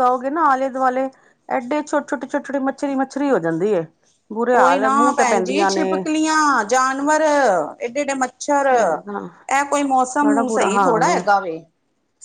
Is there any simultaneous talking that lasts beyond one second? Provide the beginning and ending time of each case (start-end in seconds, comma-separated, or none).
none